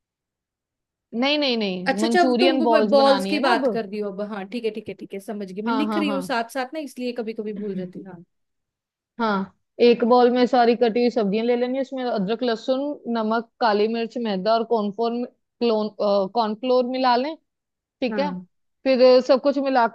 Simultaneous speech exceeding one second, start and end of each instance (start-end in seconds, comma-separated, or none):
1.9-3.6